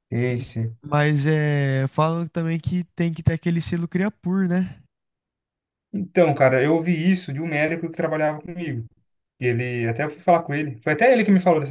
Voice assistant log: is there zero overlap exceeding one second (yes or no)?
yes